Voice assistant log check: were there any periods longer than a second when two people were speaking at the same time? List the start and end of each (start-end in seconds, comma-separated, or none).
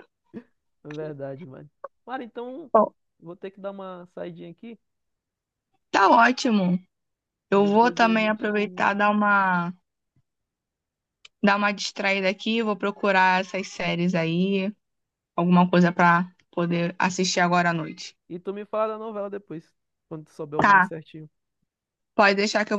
7.5-8.8